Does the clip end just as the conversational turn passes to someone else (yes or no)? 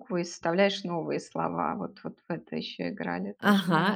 yes